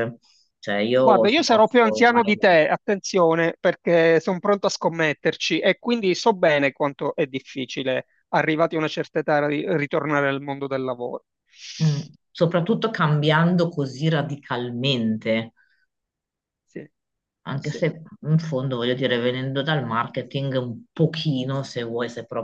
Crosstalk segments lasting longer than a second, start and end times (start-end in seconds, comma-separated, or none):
1.0-2.2